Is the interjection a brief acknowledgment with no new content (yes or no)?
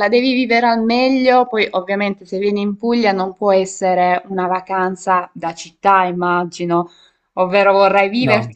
yes